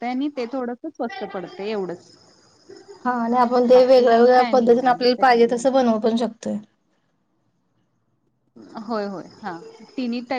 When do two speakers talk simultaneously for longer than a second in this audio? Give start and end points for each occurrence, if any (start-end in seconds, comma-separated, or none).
3.7-5.9